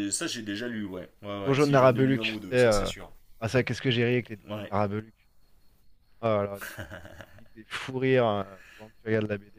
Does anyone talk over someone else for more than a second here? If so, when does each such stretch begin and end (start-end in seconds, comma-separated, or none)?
1.4-2.9